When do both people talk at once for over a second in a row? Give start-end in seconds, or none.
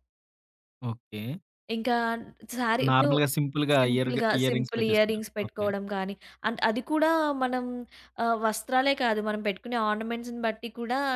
3.8-5.7